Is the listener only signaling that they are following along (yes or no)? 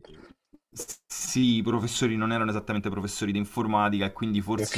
yes